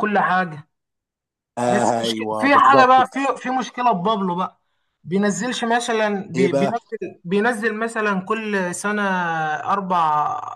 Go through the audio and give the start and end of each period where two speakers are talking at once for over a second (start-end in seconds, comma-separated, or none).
1.7-3.2